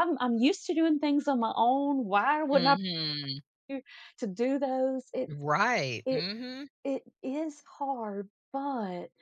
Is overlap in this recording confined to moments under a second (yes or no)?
yes